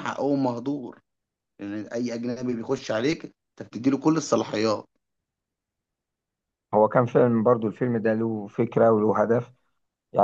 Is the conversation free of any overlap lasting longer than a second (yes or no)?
yes